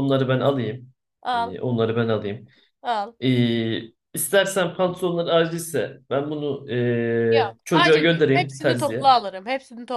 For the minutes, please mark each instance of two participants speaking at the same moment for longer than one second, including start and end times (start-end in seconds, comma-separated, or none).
7.3-9.1